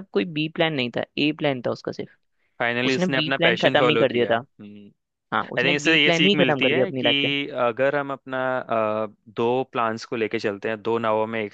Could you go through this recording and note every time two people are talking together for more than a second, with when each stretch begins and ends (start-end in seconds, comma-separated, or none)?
2.9-4.4, 5.6-7.1